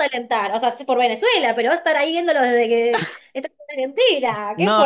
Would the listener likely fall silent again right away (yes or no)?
no